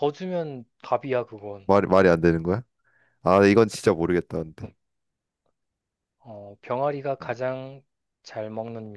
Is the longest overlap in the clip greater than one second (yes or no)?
no